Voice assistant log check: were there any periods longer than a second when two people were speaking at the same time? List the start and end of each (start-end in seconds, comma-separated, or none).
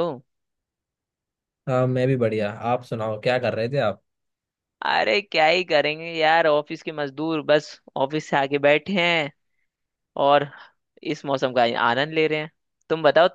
none